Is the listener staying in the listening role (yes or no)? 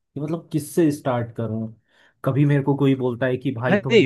no